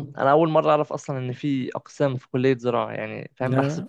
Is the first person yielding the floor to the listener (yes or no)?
no